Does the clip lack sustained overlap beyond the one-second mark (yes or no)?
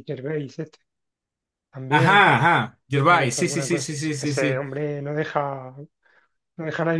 no